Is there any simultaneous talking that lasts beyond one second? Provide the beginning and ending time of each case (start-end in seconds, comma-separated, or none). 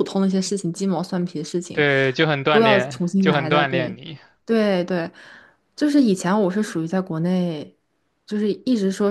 2.5-4.0